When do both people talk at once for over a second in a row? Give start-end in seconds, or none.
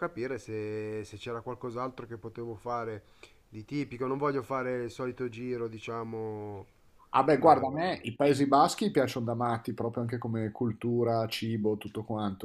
none